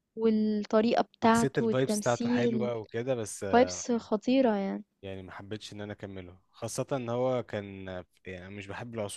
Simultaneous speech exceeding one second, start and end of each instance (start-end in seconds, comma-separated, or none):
1.2-2.7